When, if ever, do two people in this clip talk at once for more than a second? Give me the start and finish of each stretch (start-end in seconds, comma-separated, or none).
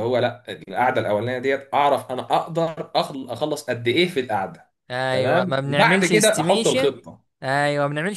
5.1-7.0